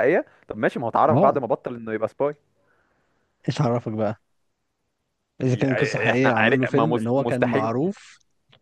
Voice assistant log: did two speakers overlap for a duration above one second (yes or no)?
yes